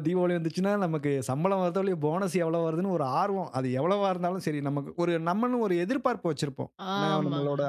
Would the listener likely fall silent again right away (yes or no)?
yes